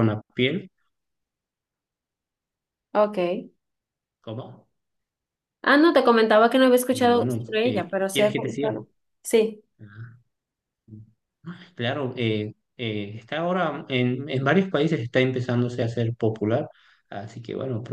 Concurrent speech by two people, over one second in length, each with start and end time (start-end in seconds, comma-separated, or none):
6.9-8.7